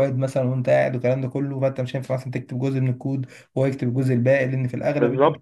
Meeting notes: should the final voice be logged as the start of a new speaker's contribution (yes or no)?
yes